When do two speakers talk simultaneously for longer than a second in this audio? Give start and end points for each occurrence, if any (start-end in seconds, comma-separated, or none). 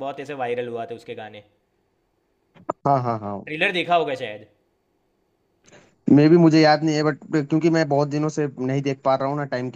none